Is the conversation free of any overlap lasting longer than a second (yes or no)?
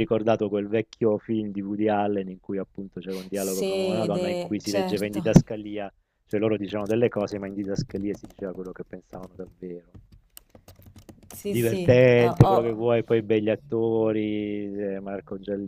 no